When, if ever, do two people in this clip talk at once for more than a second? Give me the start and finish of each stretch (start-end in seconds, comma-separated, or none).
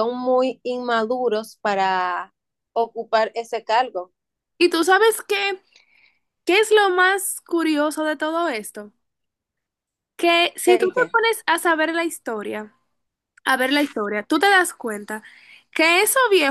none